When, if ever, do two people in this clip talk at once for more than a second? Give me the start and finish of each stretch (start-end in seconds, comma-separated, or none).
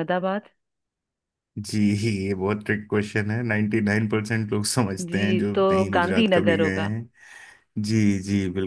5.1-6.9